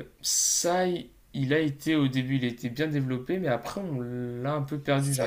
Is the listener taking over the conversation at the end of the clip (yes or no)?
yes